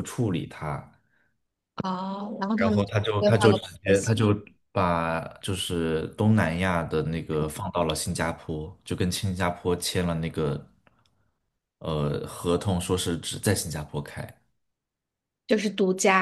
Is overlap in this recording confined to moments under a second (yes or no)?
no